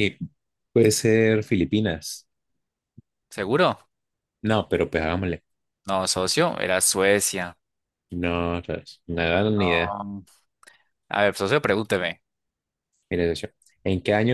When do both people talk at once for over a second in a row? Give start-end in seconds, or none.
none